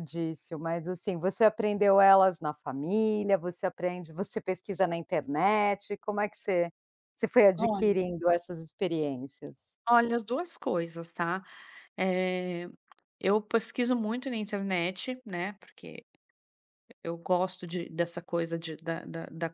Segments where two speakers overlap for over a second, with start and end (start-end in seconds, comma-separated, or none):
none